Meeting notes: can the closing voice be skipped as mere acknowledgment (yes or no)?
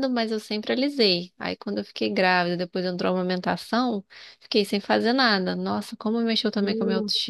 no